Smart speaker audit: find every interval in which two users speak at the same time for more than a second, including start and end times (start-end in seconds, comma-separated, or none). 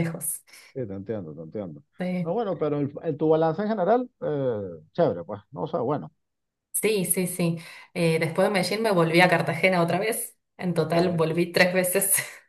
none